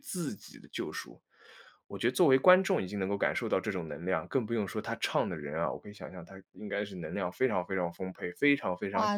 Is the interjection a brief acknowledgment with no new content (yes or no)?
no